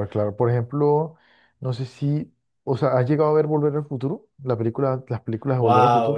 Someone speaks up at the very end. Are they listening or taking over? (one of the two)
taking over